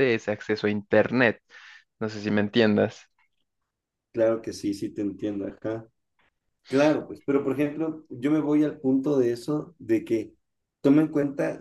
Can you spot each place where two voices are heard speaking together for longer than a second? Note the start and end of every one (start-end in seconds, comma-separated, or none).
none